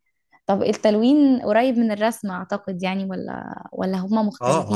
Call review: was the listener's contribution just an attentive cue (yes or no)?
no